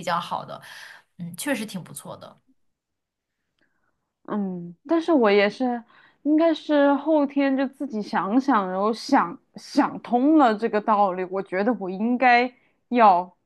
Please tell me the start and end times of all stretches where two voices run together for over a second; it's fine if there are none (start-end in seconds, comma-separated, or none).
none